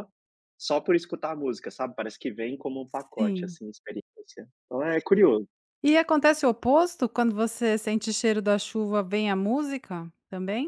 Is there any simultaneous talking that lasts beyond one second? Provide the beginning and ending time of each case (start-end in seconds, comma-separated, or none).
none